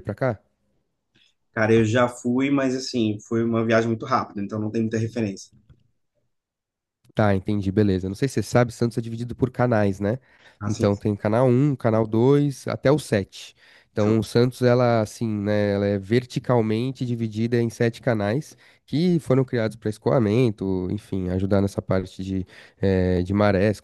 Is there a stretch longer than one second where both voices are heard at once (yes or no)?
no